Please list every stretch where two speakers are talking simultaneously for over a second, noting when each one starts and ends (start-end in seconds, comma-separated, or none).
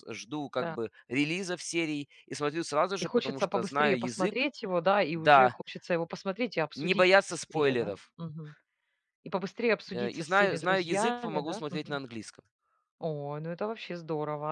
3.0-4.5, 6.7-8.1, 9.9-12.0